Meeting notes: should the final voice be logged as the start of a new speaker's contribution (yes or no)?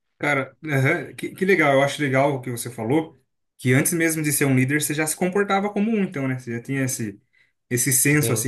no